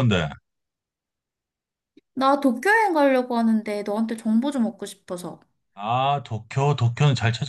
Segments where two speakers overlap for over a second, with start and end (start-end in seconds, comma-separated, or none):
none